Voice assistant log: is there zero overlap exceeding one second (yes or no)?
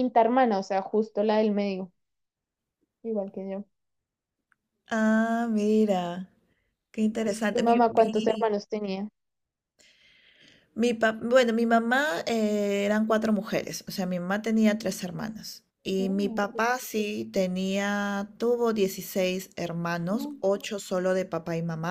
no